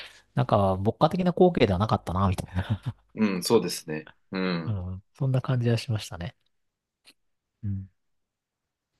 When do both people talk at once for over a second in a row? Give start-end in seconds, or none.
none